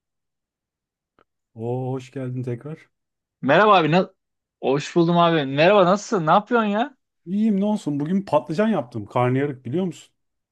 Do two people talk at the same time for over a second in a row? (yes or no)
no